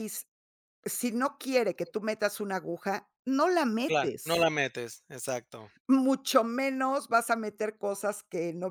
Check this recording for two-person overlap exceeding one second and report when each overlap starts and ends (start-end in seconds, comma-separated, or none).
none